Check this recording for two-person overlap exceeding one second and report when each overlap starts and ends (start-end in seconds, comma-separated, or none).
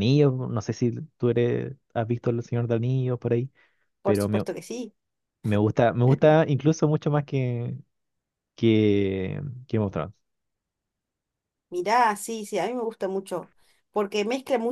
none